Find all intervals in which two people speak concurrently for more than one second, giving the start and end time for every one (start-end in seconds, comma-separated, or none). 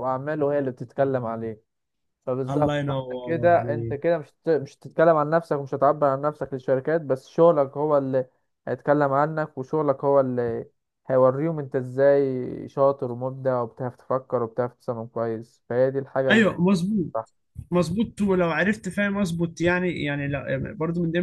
2.5-4.0